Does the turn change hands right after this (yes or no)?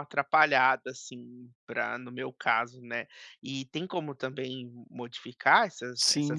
yes